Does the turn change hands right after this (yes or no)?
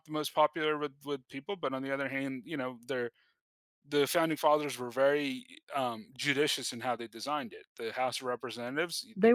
no